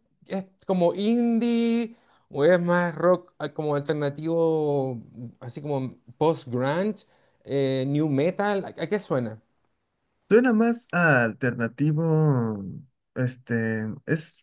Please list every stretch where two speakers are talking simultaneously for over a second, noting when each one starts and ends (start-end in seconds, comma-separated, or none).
none